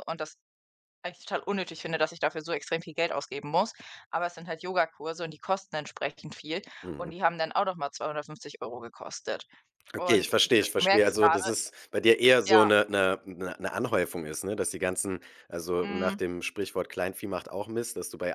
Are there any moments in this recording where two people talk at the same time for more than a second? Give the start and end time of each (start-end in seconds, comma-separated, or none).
9.9-11.5